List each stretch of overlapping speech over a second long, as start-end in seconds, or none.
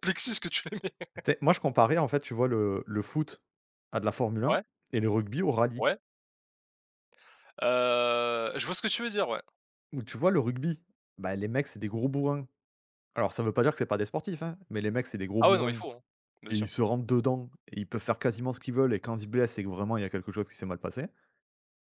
none